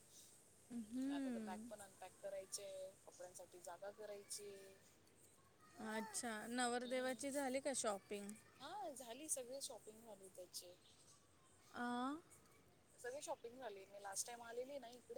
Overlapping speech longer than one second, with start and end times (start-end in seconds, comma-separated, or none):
none